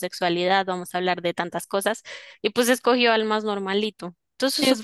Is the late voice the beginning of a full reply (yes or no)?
yes